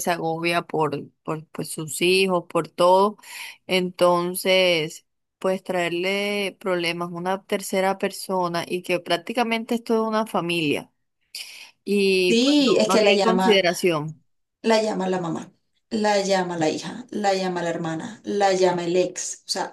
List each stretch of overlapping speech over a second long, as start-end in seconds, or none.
12.3-13.6